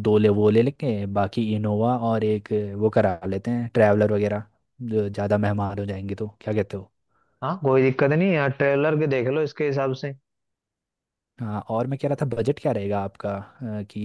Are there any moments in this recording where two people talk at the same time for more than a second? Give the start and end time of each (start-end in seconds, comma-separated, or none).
none